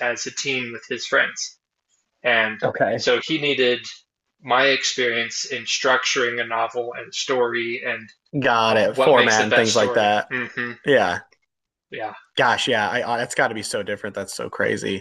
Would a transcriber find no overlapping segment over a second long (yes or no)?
no